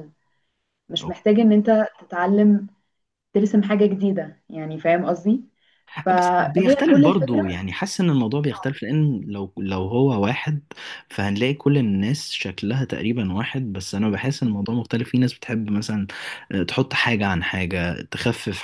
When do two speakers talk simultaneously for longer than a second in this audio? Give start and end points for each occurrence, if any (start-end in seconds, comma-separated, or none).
6.1-7.6